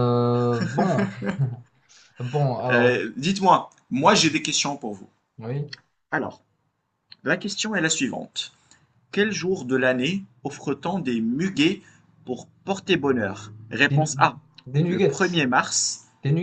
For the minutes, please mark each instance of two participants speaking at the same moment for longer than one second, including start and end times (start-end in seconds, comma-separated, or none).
none